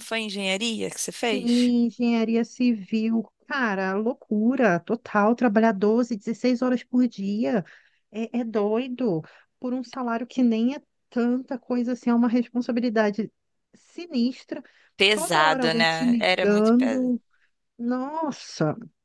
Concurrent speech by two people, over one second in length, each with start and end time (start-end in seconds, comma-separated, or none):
15.1-17.1